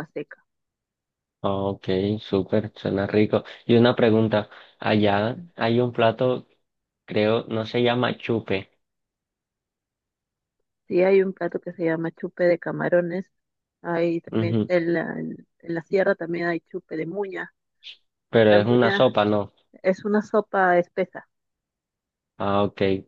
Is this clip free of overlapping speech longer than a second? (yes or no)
yes